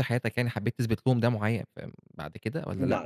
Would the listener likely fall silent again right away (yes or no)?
no